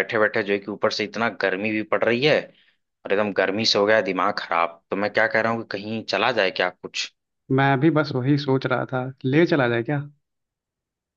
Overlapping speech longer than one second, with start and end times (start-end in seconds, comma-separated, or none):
none